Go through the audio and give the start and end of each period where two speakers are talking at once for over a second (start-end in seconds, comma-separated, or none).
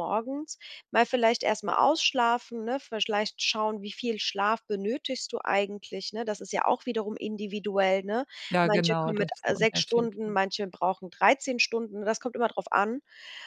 8.6-10.5